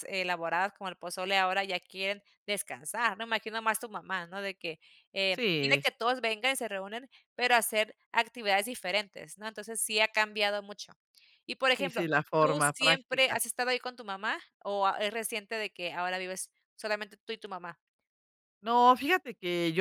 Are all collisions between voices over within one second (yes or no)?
no